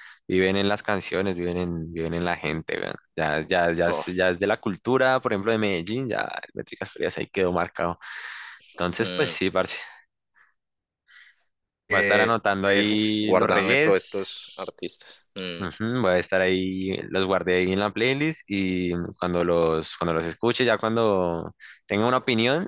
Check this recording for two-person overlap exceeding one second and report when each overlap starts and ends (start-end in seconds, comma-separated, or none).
11.9-14.7